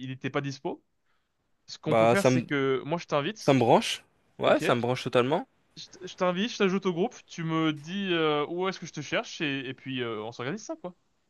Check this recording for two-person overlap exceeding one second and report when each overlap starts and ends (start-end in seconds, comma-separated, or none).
none